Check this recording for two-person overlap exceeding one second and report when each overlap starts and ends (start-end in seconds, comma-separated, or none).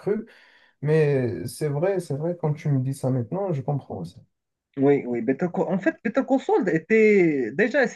none